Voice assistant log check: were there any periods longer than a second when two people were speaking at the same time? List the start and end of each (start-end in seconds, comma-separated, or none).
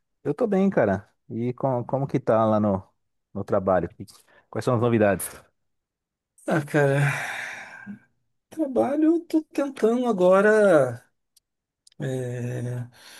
none